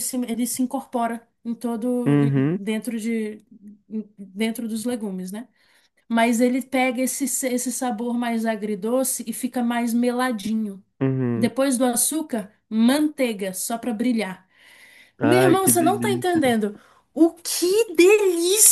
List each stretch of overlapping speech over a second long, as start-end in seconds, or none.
15.2-16.4